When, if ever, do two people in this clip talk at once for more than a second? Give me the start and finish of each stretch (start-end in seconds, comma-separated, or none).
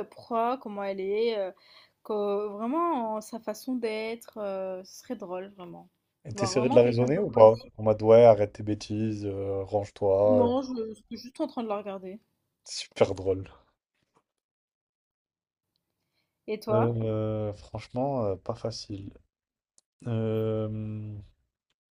6.3-7.7